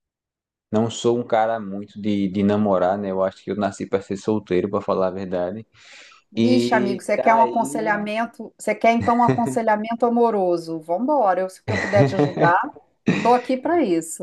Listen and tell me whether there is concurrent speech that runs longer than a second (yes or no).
yes